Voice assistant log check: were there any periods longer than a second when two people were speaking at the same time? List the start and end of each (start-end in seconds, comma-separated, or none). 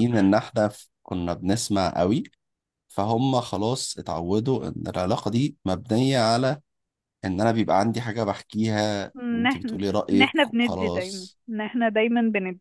9.2-11.4